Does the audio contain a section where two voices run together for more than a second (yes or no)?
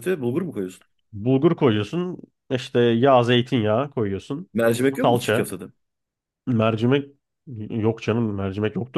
no